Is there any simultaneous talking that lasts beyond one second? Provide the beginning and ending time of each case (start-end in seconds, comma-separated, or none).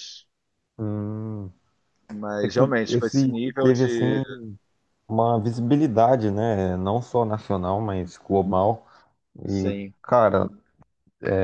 2.4-4.1